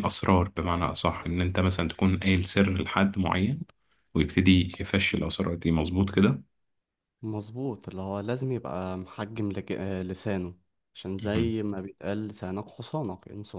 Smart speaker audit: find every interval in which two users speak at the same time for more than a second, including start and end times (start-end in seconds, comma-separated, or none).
none